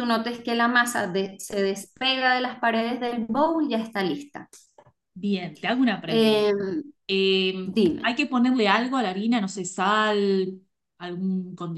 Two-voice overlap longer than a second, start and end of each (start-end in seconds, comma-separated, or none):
none